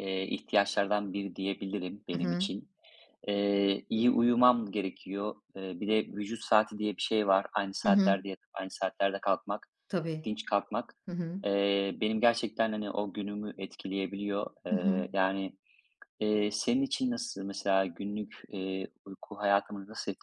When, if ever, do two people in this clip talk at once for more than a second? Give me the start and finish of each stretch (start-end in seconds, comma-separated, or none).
none